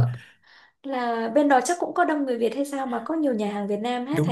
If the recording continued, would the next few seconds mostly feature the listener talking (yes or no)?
yes